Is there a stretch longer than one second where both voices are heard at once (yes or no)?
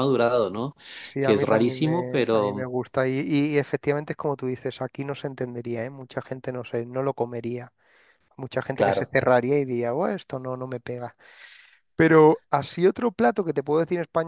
yes